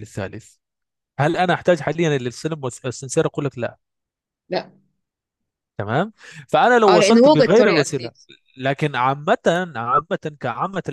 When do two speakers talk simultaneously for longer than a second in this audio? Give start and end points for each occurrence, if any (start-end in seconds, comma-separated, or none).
6.9-8.1